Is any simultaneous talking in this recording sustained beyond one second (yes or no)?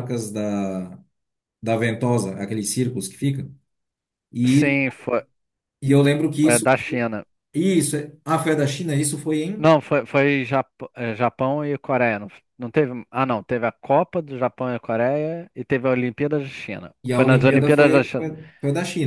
yes